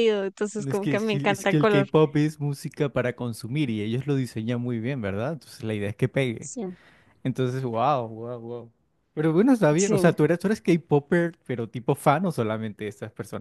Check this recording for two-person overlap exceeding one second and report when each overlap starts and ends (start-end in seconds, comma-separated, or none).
0.6-1.9